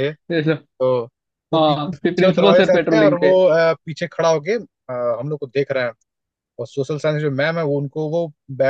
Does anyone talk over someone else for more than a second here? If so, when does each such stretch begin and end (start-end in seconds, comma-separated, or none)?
1.6-3.4